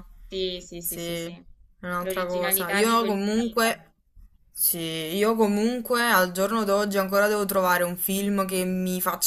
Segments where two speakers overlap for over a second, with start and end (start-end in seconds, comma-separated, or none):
2.0-3.9